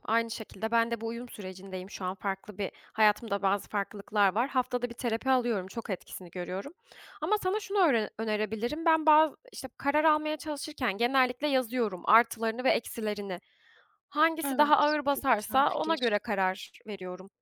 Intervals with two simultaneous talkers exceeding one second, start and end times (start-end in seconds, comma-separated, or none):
14.5-16.2